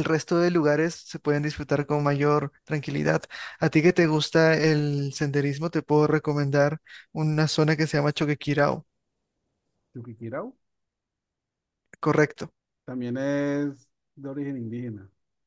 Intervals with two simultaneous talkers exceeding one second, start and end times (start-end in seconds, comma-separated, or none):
none